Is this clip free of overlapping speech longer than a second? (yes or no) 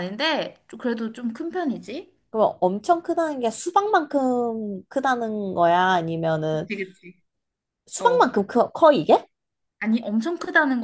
yes